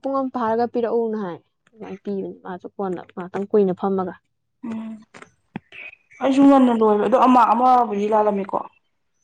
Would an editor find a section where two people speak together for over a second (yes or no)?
no